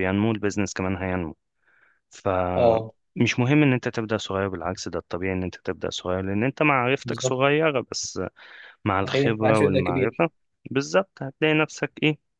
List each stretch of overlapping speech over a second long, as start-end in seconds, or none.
9.0-10.2